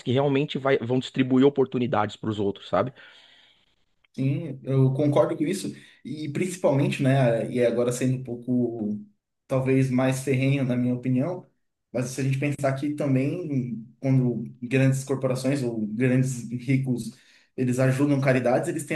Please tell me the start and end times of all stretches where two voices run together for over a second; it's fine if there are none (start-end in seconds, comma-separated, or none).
none